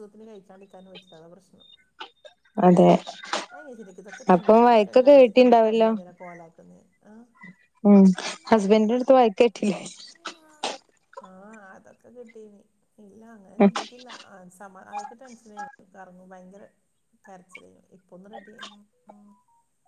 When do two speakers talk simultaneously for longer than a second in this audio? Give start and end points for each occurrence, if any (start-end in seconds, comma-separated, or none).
4.3-5.9